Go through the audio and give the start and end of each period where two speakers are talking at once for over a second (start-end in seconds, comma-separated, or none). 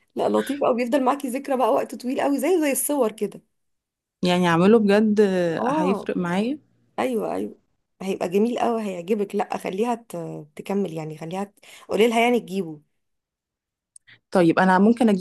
none